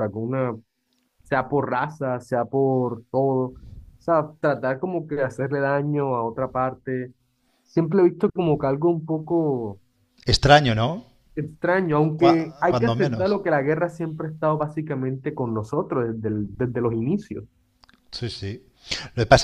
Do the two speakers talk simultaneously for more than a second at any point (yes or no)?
yes